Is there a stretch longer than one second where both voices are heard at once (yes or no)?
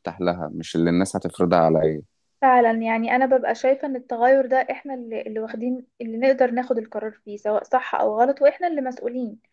no